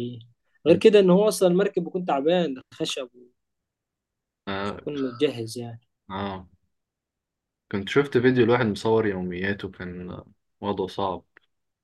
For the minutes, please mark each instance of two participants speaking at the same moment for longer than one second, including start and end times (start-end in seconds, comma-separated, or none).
none